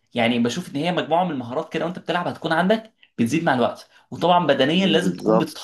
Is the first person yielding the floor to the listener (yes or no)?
no